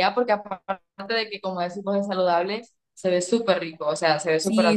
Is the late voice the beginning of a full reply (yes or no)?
yes